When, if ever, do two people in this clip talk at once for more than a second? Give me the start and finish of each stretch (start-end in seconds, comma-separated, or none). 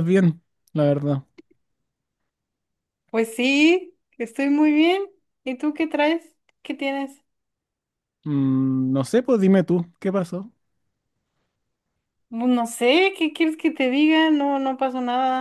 none